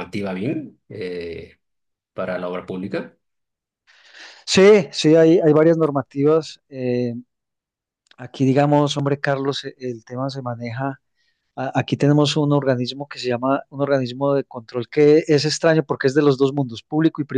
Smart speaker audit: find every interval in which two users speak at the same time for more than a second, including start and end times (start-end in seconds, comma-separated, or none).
none